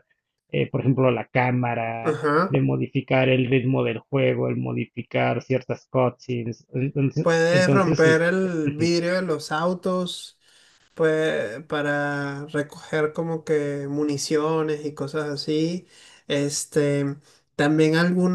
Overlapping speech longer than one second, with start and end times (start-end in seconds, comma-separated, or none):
7.2-8.9